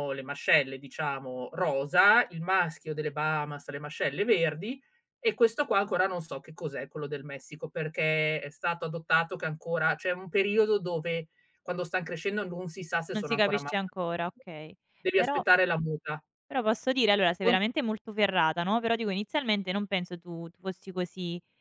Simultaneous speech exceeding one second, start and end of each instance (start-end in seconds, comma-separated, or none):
13.1-14.4